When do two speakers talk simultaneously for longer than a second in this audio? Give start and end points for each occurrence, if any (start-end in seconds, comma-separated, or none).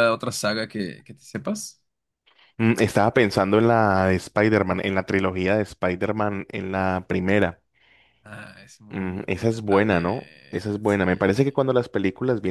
8.9-11.6